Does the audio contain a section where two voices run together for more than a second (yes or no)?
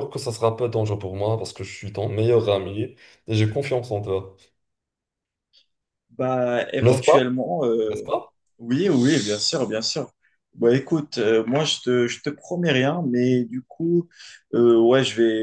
no